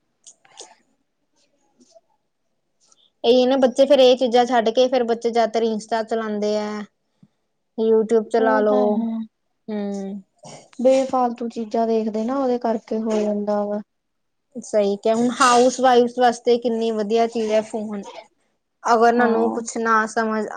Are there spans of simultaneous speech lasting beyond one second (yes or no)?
no